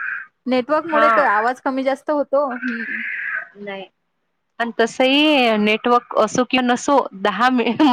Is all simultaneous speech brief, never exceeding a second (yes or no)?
yes